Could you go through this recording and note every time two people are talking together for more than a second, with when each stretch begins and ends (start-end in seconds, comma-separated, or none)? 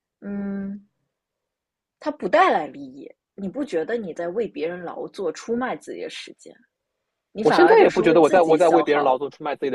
7.4-9.2